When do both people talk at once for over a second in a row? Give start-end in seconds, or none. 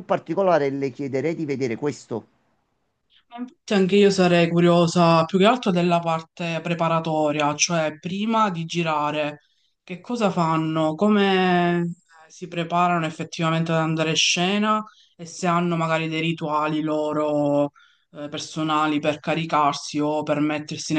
none